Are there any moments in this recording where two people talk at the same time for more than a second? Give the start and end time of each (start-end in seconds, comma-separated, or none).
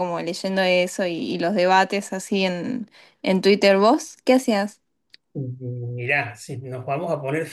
none